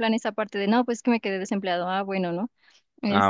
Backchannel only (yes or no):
no